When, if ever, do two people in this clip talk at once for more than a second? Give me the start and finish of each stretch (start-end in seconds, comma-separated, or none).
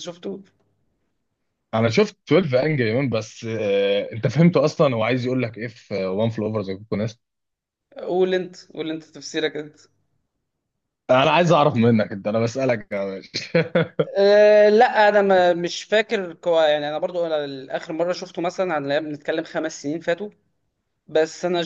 none